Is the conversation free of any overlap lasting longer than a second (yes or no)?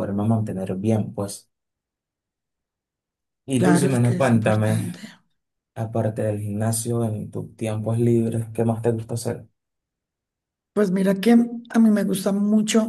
no